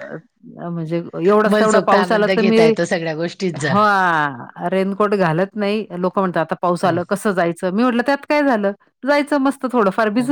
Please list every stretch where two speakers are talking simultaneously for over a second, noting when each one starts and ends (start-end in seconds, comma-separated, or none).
1.5-2.7